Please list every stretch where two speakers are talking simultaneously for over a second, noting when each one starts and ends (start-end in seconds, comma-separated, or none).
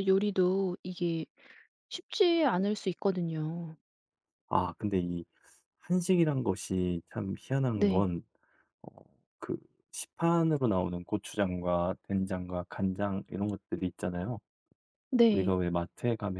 none